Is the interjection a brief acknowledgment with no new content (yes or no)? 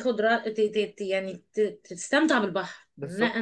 yes